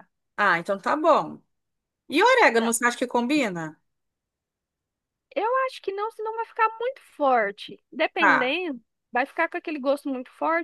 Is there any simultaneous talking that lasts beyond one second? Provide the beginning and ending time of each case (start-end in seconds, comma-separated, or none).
none